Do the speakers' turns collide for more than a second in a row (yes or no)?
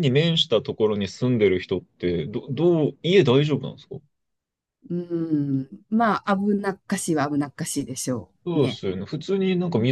no